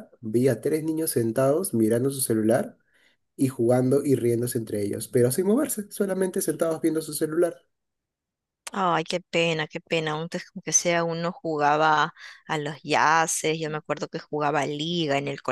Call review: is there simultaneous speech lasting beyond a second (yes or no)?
no